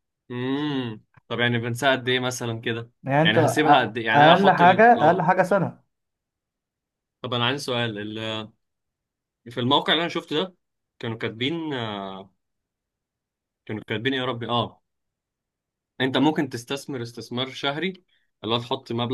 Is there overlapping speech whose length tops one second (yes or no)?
yes